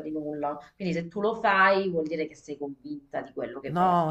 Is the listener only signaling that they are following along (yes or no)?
no